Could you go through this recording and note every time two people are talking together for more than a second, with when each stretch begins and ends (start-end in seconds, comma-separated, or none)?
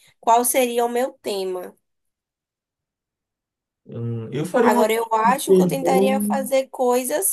4.6-6.1